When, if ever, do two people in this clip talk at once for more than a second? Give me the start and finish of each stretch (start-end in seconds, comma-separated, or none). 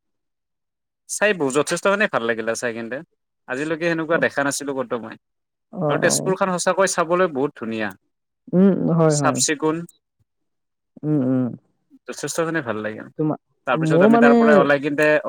none